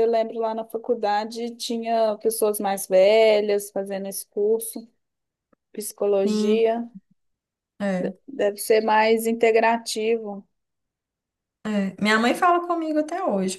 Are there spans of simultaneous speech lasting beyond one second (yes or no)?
no